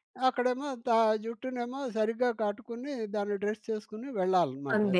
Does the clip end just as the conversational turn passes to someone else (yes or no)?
yes